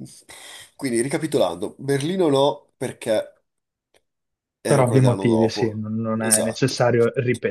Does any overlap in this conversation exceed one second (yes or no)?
yes